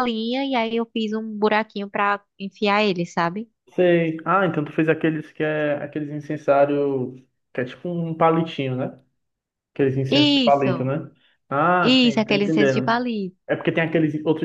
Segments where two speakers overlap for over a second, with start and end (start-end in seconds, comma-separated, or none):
11.8-13.0